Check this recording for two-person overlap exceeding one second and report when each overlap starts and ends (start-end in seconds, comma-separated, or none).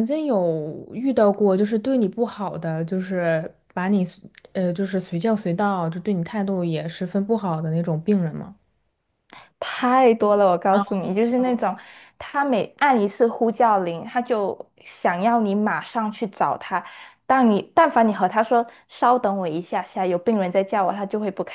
none